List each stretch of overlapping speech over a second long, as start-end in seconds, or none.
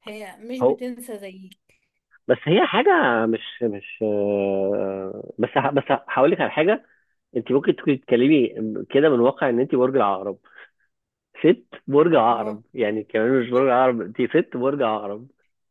none